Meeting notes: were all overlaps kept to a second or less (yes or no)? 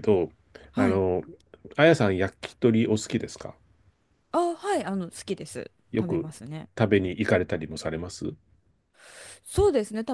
yes